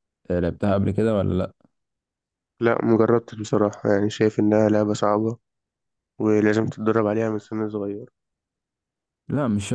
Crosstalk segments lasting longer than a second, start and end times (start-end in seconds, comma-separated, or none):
none